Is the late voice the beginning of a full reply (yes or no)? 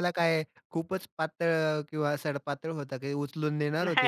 yes